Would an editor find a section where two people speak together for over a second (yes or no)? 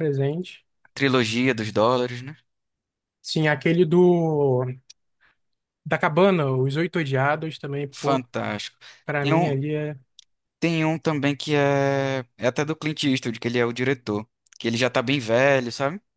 no